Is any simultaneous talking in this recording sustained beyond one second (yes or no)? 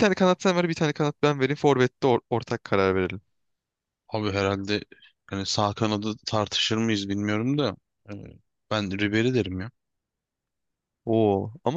no